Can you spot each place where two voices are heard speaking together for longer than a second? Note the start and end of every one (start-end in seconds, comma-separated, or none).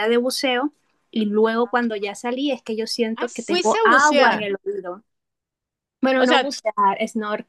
3.1-4.4